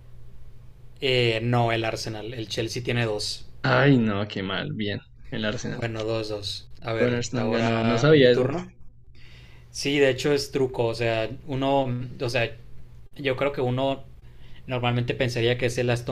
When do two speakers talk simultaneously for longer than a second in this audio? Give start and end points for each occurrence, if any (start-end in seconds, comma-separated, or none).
7.0-8.5